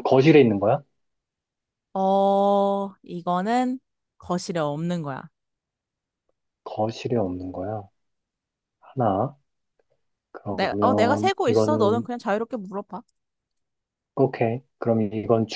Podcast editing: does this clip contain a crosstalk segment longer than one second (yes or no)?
yes